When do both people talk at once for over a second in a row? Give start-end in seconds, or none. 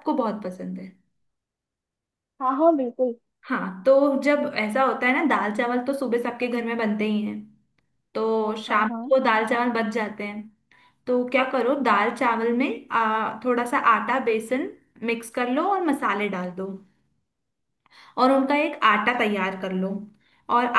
none